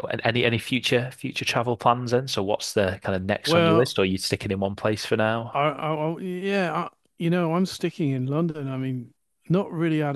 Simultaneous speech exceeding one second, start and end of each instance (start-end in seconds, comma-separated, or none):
none